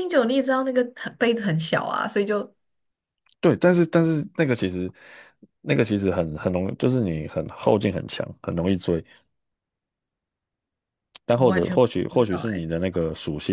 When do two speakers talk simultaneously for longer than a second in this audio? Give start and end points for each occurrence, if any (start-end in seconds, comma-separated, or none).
11.3-12.7